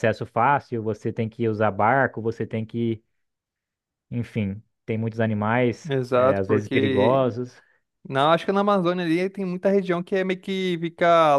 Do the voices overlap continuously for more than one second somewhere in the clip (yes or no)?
yes